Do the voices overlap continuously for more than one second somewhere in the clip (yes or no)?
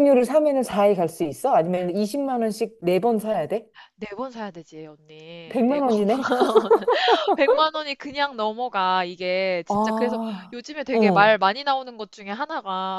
yes